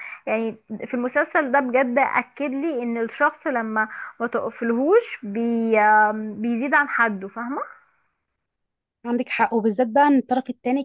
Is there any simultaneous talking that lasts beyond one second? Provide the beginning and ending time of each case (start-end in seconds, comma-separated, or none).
none